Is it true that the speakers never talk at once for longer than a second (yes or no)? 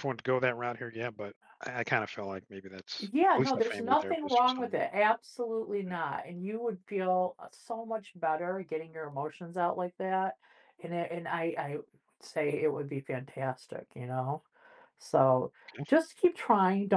no